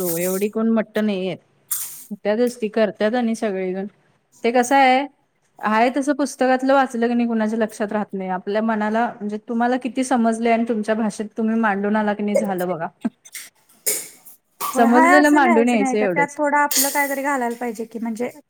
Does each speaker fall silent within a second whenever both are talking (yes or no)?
no